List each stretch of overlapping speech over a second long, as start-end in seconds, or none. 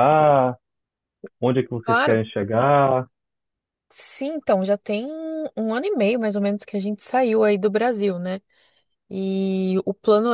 none